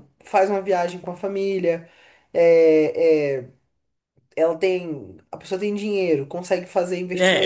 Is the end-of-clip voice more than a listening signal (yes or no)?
yes